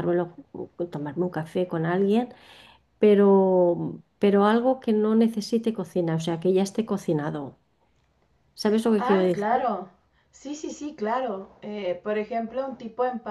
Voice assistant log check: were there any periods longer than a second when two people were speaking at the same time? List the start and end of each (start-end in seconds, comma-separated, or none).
none